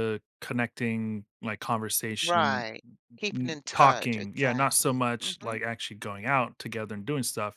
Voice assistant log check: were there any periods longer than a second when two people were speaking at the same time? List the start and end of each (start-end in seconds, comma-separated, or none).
3.3-5.5